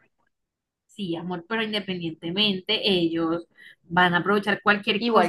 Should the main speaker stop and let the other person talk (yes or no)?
yes